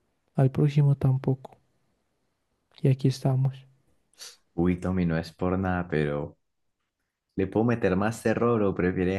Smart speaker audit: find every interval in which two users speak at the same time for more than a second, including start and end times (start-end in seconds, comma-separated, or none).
none